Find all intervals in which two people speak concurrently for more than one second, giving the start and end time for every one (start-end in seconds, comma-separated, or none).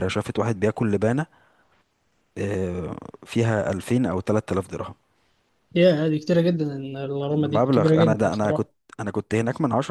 7.3-8.7